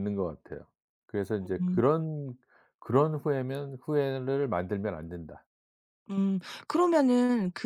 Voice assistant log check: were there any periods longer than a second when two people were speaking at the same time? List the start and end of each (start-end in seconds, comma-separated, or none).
none